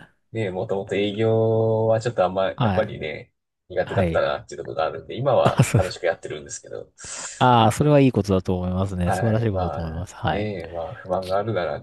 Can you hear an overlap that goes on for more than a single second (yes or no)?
yes